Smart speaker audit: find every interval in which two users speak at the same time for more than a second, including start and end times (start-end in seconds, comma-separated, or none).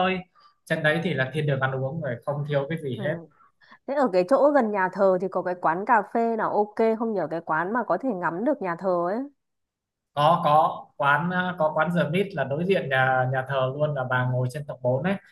none